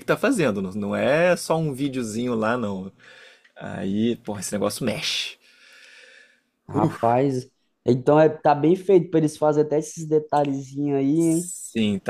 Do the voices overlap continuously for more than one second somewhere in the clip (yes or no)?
no